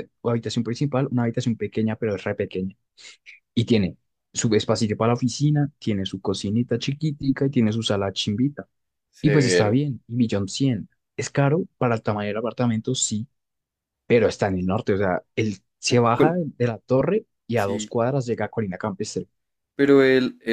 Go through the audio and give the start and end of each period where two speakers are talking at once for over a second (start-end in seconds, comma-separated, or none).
none